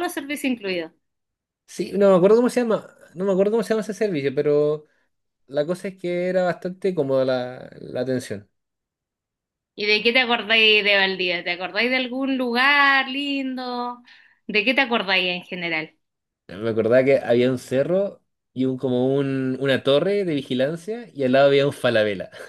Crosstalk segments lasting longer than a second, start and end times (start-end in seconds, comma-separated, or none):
none